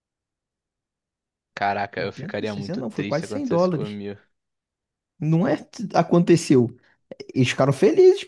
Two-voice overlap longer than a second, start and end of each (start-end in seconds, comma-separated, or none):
2.0-4.0